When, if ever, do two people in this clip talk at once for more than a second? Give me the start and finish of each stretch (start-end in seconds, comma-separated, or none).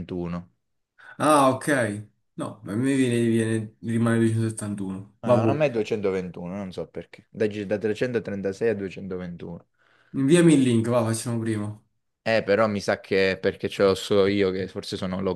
none